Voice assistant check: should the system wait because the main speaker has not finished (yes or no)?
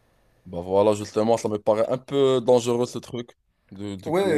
no